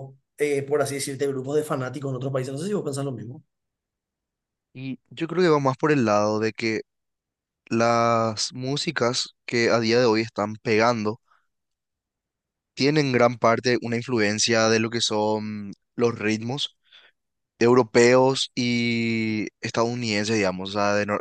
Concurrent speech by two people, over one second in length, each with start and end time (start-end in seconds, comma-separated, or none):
none